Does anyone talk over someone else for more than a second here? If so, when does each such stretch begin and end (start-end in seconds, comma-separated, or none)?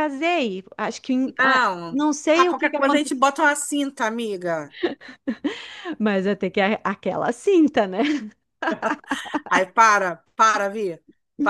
1.4-3.2